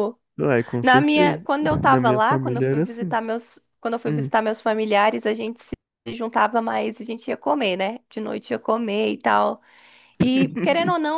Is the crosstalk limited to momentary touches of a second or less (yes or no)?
no